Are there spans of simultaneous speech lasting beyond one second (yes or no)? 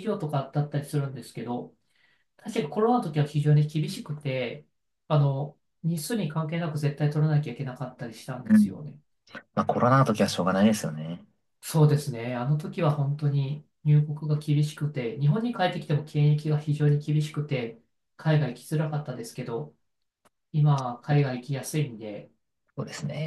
no